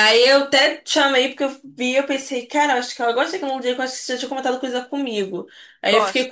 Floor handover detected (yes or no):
no